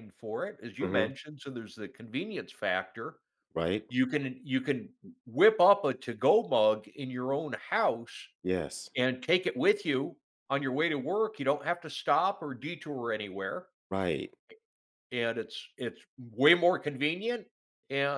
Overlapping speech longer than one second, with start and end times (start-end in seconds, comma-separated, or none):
none